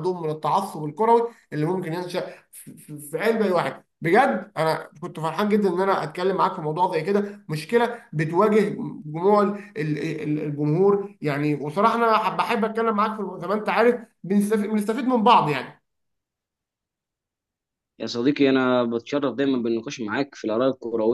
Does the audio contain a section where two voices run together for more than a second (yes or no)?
no